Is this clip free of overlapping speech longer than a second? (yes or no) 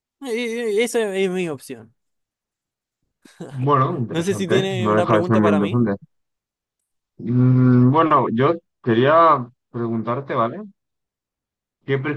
no